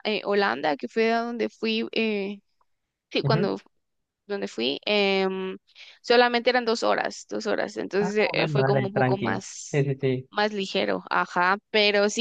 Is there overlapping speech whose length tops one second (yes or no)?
yes